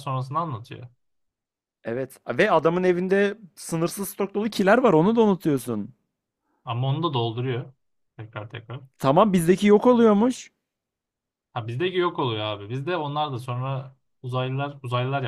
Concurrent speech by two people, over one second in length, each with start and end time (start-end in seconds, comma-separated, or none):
none